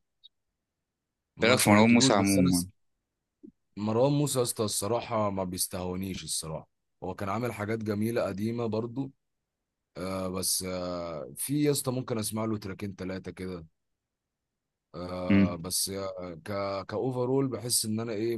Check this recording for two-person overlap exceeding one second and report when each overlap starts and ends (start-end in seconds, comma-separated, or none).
1.4-2.6